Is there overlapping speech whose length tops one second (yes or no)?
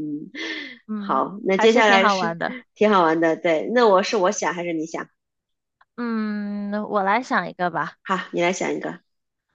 yes